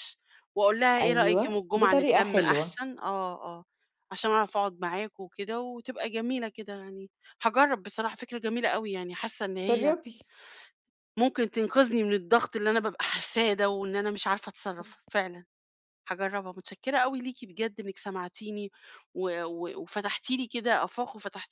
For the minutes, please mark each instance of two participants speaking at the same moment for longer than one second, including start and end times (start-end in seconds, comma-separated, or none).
1.0-2.8